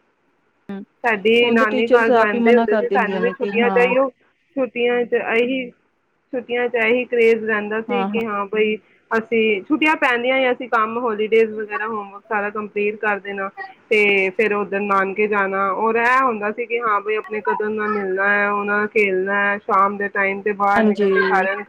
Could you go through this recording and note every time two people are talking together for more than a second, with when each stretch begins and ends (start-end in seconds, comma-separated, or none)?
1.4-3.8